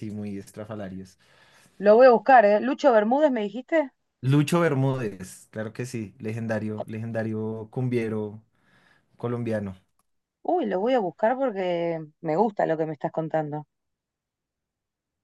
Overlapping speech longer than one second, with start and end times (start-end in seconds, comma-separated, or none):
none